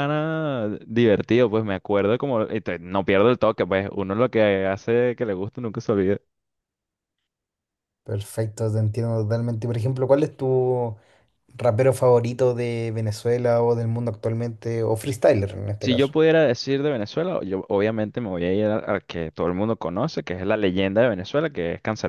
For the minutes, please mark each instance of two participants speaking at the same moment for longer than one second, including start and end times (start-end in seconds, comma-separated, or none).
none